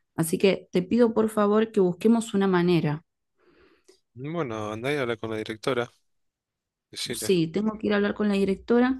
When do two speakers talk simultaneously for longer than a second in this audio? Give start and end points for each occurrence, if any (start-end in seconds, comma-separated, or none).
none